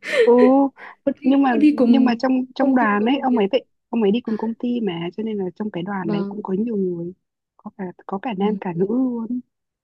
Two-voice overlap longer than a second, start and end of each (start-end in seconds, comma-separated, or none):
1.2-3.4